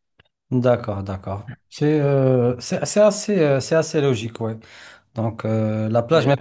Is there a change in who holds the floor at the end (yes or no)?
no